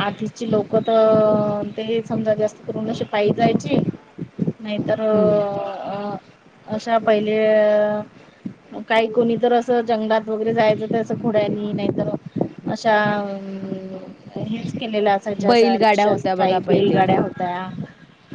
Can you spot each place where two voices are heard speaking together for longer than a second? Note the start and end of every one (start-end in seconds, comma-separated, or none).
15.5-17.0